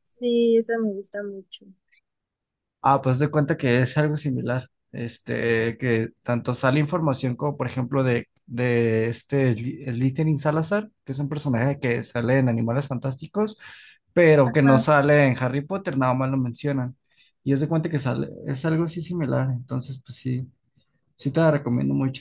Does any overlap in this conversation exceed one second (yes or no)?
no